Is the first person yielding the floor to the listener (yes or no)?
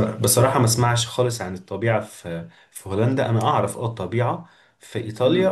no